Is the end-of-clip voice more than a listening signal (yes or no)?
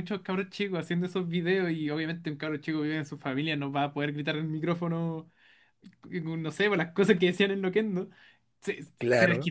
no